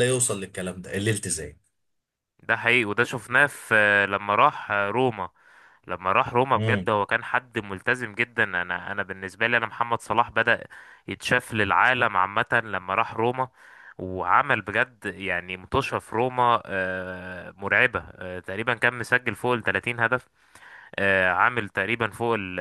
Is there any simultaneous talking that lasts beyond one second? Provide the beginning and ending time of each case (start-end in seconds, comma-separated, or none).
none